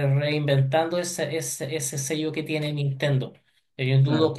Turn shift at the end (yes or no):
no